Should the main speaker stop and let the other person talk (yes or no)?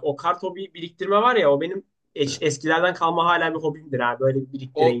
yes